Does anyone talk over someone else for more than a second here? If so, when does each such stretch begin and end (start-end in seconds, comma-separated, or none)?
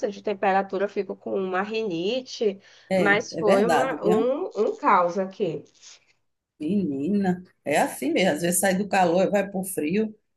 2.9-4.3